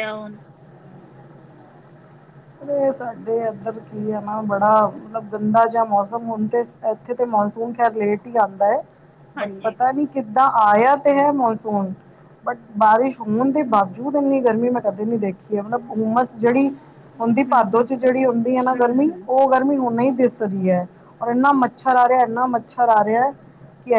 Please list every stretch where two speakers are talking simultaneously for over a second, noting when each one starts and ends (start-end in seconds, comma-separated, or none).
17.5-19.2